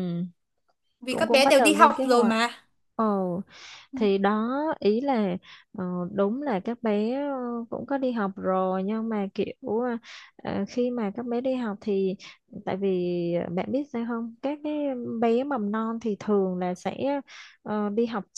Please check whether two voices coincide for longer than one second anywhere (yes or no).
yes